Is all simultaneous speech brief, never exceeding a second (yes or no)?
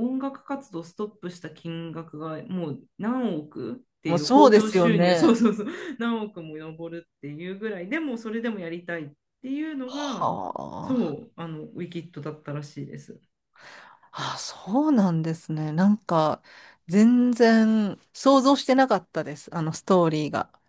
no